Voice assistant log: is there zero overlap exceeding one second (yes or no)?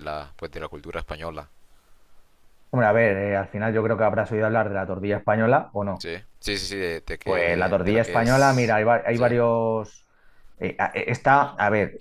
no